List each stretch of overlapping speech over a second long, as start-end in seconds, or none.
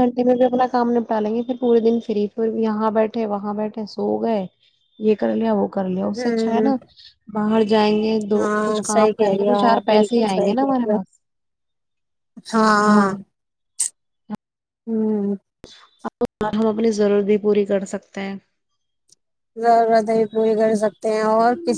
8.3-10.9